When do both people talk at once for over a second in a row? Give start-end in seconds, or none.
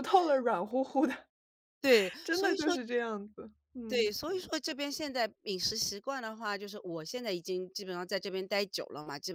none